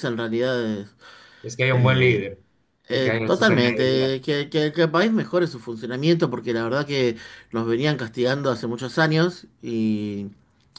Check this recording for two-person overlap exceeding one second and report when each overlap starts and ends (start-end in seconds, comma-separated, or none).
2.9-4.1